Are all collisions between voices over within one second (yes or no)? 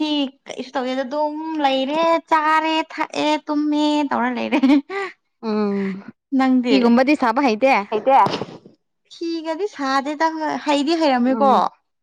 yes